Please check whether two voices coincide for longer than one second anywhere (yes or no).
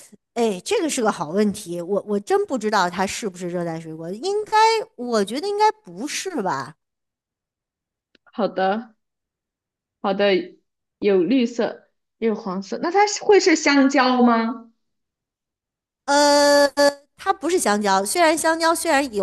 no